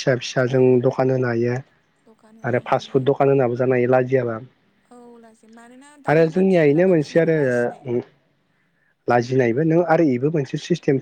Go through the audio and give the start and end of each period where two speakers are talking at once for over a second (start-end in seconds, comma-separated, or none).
6.1-7.9